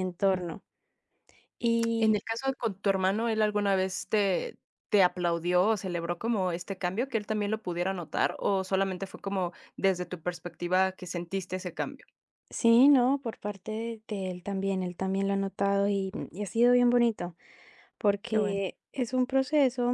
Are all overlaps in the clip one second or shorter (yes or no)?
yes